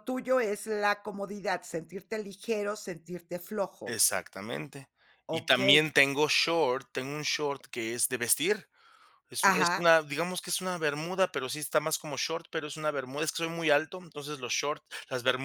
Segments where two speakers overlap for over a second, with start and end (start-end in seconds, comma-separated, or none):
none